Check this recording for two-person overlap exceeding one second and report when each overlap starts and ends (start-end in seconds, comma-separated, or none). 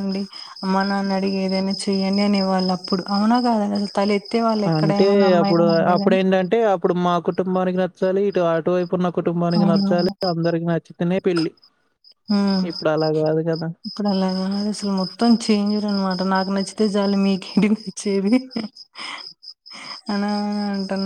none